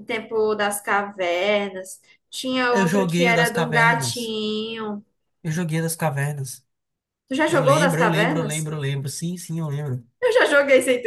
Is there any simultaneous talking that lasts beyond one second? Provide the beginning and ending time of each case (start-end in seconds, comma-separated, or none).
2.7-4.3, 7.5-8.7